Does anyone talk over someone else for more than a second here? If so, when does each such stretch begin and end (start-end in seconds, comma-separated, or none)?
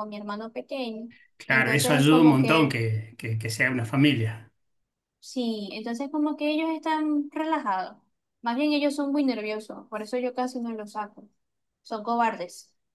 1.5-2.8